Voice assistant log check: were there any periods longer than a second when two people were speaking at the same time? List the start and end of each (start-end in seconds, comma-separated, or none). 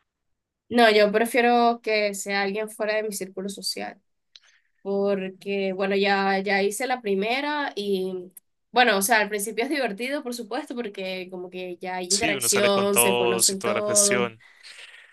12.1-14.3